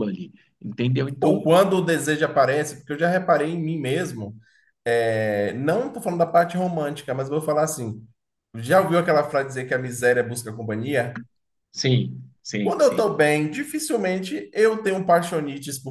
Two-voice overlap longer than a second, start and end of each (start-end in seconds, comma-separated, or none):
none